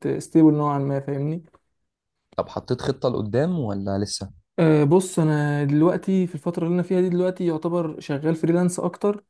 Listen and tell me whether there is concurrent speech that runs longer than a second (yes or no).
no